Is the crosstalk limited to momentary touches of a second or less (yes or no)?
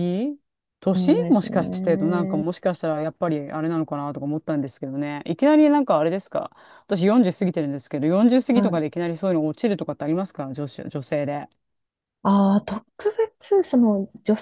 no